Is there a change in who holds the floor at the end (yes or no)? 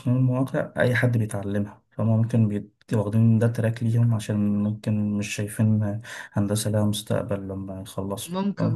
yes